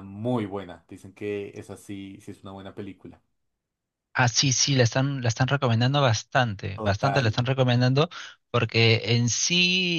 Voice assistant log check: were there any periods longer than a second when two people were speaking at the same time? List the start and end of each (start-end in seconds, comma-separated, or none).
none